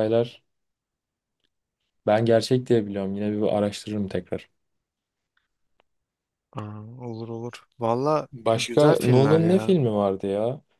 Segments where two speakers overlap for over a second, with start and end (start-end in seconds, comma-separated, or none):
8.3-9.8